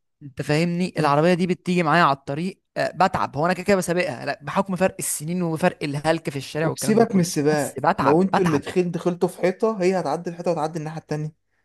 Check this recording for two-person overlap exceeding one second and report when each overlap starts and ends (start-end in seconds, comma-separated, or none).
6.6-8.6